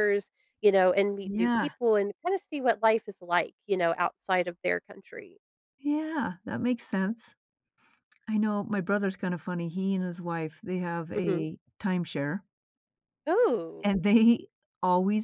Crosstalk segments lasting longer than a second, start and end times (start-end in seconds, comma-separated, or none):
none